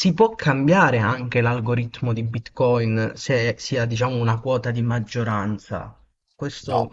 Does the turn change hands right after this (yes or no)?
no